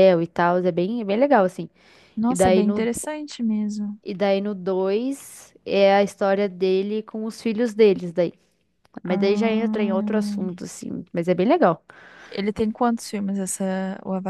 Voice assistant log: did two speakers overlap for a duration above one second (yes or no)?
yes